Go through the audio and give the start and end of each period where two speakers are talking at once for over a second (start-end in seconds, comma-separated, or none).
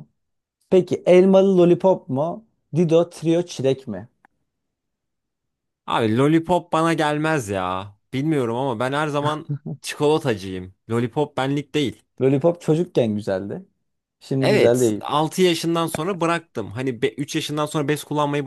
none